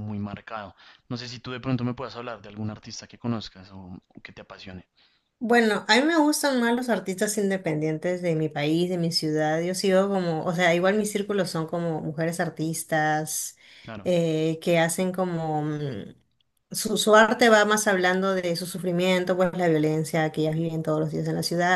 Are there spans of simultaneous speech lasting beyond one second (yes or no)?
no